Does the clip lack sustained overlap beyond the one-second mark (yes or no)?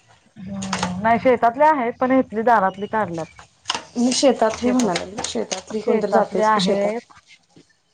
no